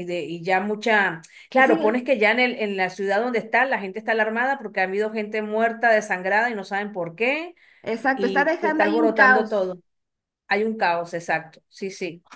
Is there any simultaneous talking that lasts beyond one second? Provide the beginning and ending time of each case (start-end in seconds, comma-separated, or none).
8.1-9.7